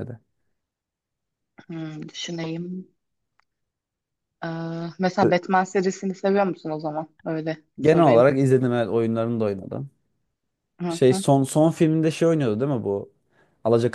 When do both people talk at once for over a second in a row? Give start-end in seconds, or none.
none